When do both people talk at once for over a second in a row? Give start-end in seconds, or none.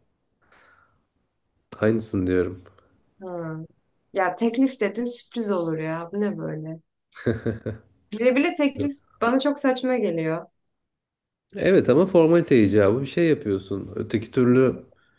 none